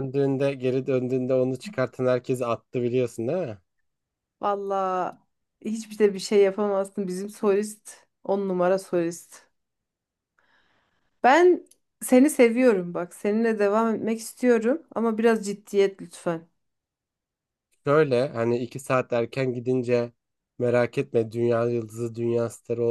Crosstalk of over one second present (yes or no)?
no